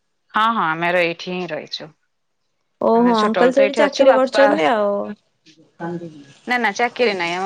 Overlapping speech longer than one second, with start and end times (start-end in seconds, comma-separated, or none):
3.0-4.4